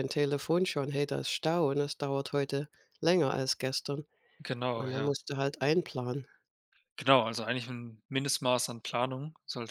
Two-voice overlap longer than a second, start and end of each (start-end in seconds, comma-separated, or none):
none